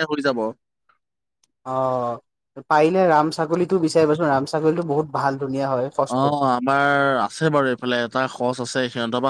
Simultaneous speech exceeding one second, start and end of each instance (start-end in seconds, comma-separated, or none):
none